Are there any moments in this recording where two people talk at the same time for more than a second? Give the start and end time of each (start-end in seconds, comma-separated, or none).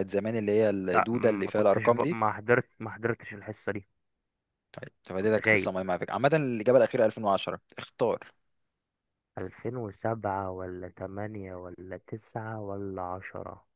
0.9-2.2